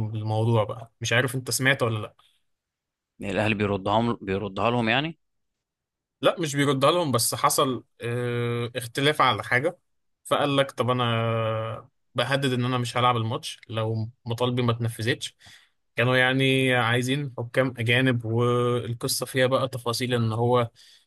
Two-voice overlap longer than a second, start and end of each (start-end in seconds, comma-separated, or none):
none